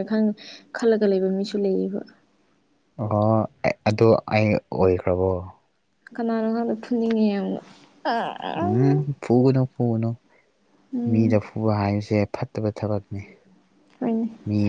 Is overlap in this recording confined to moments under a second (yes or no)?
yes